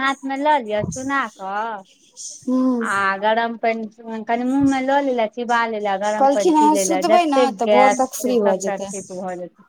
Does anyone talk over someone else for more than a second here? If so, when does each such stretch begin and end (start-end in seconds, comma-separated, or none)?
6.2-8.9